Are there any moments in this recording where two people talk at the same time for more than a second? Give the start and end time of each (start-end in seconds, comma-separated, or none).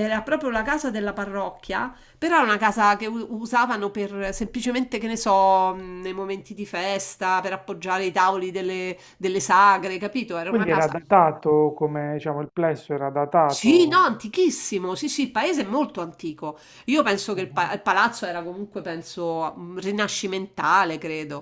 none